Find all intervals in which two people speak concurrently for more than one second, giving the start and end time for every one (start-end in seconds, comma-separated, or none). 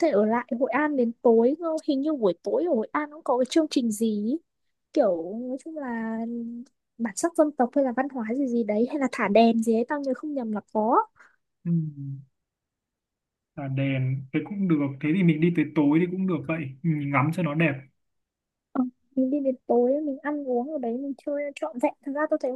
none